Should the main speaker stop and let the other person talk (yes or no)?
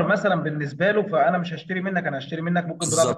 yes